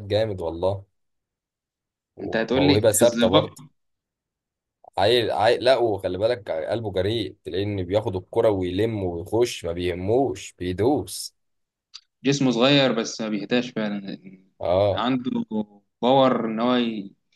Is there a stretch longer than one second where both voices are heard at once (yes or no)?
yes